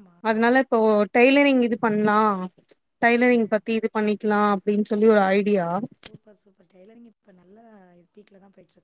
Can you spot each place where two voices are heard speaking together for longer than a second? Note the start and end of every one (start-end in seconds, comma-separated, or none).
none